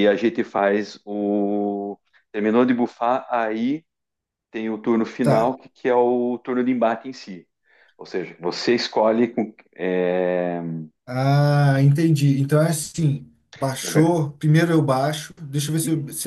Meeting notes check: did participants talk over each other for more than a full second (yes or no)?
no